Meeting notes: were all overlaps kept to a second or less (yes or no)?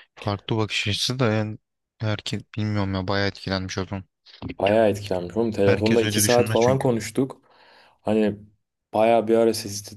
no